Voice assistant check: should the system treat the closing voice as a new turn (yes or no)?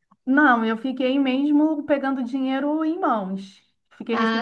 no